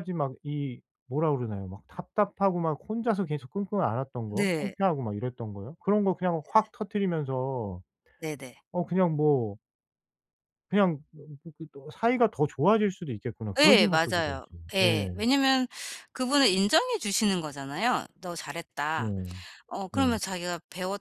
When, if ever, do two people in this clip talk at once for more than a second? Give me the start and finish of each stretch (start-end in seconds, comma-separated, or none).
13.6-15.3